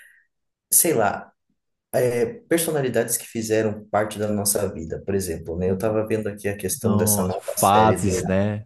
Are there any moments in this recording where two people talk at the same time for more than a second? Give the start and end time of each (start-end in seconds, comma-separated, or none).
6.8-8.1